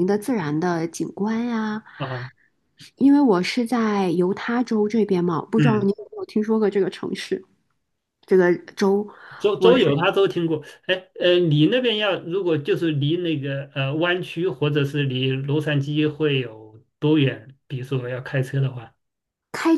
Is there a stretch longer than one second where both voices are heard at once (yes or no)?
no